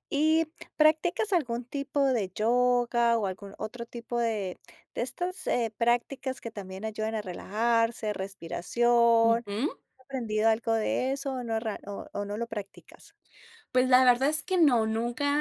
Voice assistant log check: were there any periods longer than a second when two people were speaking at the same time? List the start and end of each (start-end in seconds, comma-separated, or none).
none